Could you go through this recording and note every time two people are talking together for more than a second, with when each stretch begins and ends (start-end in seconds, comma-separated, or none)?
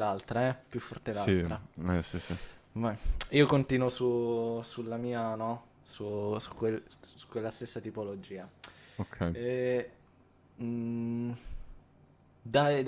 none